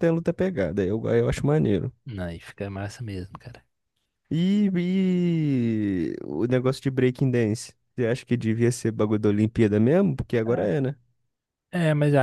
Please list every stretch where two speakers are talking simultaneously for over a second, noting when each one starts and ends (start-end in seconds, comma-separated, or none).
none